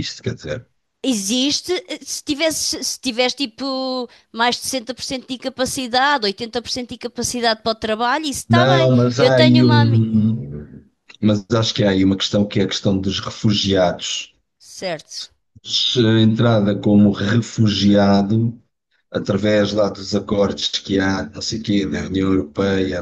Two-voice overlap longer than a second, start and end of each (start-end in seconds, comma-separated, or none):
8.5-10.0